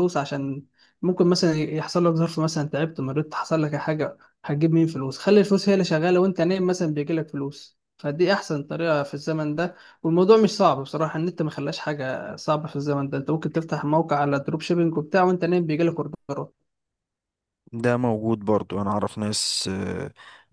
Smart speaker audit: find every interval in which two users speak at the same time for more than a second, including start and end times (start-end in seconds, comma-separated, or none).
none